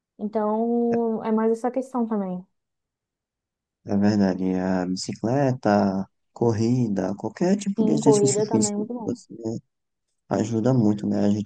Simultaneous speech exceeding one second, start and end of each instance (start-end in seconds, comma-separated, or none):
7.8-9.1